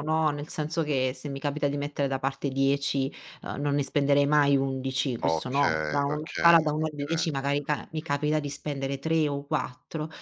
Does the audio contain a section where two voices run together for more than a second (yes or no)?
yes